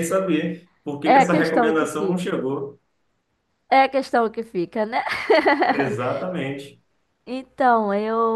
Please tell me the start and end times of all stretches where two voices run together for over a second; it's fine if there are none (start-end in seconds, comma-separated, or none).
1.0-2.2